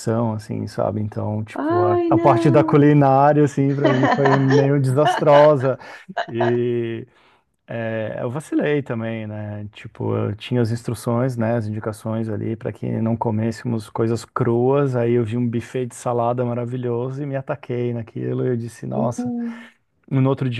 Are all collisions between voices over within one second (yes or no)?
no